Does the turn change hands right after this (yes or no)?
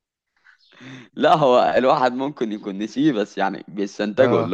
no